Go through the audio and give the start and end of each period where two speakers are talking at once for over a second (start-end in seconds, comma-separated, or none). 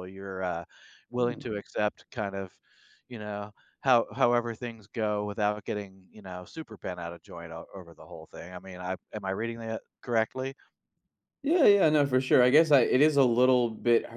none